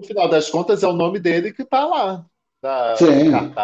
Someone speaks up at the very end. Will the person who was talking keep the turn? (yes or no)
yes